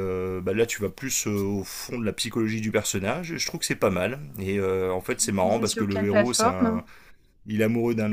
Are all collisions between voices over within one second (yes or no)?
no